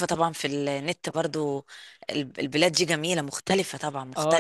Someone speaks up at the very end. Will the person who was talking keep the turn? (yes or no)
no